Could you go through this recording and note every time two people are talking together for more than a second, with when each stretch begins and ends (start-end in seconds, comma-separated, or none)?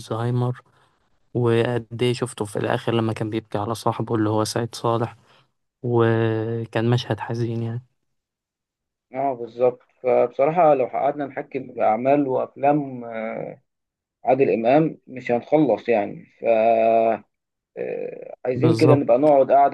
none